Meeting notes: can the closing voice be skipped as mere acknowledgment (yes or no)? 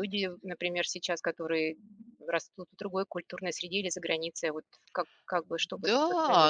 no